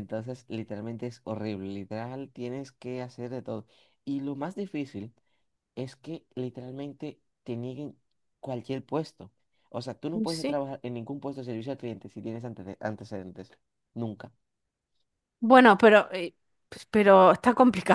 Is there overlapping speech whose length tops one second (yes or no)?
no